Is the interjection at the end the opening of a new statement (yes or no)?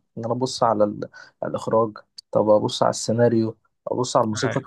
no